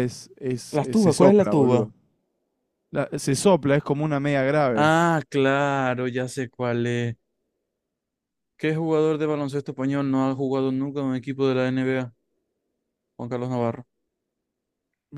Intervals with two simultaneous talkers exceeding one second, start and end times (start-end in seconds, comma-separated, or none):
0.7-1.9